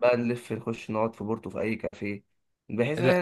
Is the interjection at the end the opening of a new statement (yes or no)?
no